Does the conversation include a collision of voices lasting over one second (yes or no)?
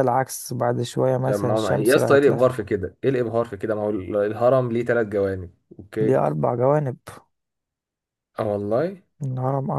yes